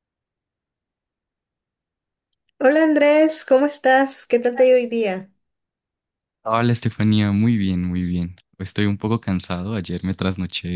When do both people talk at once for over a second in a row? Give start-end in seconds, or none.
none